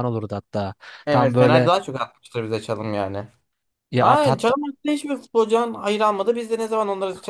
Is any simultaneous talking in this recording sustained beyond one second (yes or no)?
no